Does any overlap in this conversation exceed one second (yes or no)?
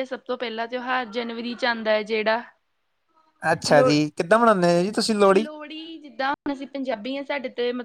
no